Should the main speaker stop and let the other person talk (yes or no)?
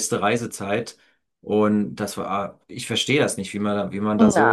yes